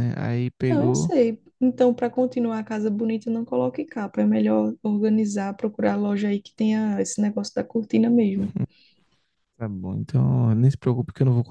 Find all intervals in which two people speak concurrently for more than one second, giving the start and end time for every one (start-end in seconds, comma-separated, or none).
none